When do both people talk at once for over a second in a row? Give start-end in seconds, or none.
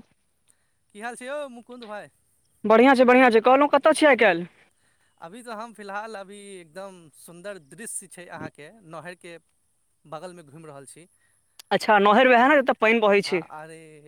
none